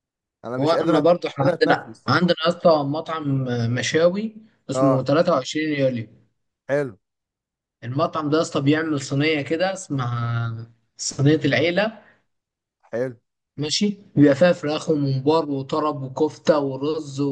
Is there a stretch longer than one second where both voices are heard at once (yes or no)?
yes